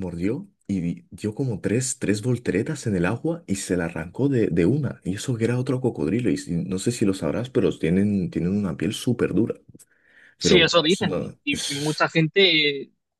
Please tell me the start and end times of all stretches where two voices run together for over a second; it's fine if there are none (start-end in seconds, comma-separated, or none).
10.4-12.0